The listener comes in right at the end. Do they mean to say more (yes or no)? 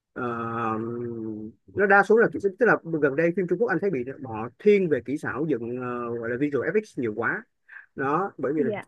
no